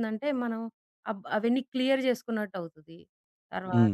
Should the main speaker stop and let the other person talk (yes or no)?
yes